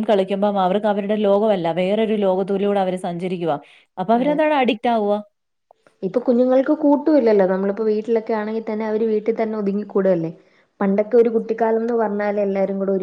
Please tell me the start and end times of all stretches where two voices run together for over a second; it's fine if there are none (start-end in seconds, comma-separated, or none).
none